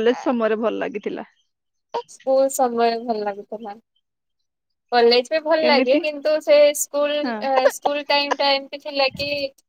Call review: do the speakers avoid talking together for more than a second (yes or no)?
yes